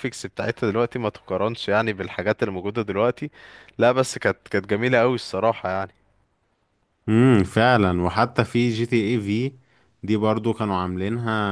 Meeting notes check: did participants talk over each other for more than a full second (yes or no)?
no